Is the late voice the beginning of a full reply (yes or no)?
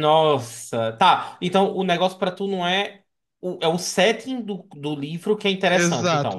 yes